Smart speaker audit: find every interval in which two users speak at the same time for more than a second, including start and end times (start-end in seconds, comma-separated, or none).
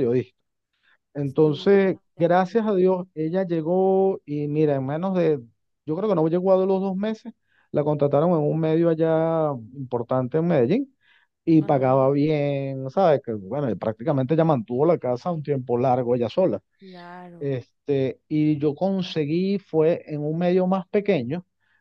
1.4-2.7